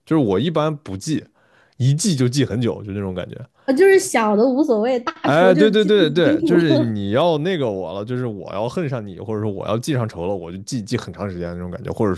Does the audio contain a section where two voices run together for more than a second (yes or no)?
yes